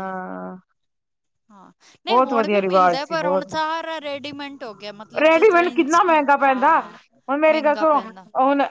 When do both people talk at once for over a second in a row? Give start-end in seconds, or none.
2.1-3.5